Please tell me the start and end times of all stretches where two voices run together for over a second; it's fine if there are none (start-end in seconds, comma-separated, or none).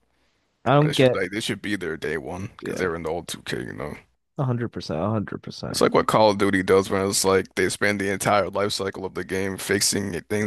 none